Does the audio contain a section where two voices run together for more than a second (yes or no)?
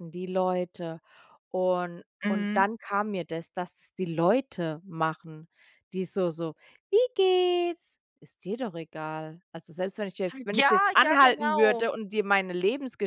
yes